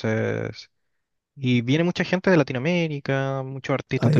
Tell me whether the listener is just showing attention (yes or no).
yes